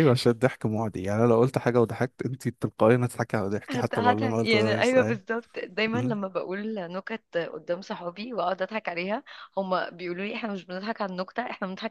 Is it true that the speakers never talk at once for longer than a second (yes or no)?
no